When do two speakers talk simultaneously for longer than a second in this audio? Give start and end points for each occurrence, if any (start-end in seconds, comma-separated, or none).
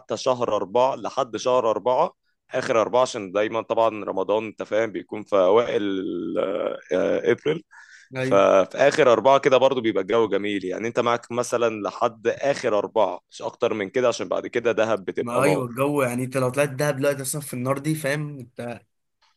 none